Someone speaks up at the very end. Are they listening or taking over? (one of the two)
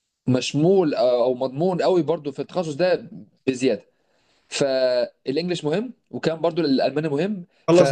taking over